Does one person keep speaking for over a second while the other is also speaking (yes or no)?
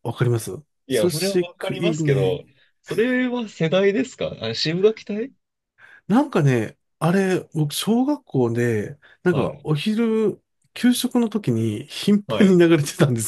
yes